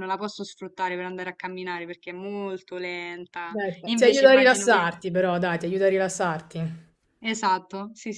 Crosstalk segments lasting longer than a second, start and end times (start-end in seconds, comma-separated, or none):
3.4-4.9